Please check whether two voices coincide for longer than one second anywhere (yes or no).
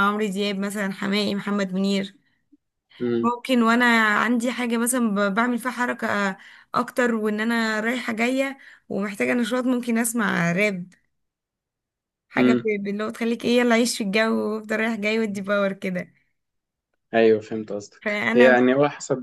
no